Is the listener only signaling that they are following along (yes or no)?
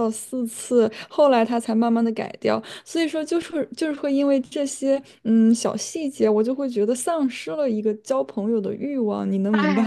no